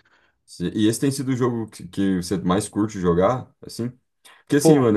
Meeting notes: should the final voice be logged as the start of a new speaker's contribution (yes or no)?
no